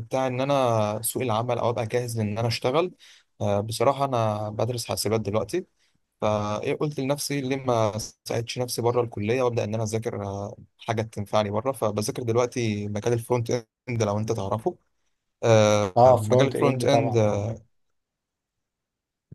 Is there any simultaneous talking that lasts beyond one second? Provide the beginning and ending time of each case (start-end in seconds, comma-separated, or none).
16.0-17.5